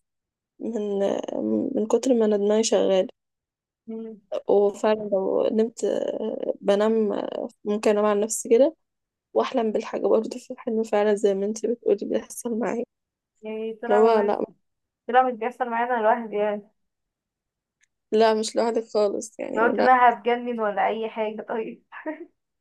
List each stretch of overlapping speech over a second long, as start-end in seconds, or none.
none